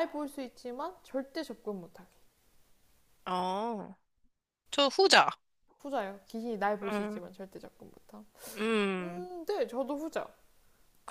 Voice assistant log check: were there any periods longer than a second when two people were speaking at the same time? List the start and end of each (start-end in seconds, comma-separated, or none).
none